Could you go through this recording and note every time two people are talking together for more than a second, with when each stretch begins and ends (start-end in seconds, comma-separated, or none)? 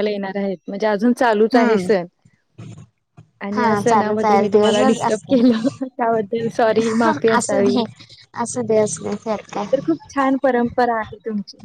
3.5-5.4